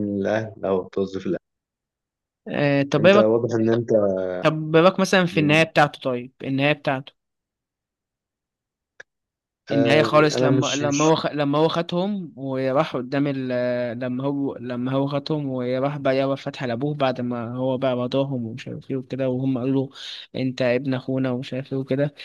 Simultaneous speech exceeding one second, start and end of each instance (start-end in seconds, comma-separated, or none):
9.7-11.0